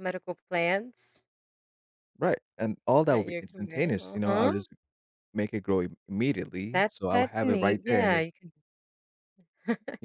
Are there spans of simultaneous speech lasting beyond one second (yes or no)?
yes